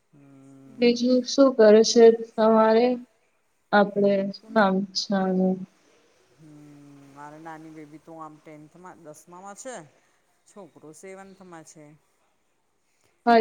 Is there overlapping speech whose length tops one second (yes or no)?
no